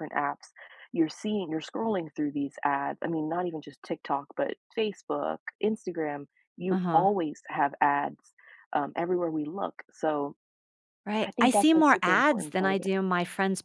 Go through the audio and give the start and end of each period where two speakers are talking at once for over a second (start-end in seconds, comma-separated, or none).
11.2-12.9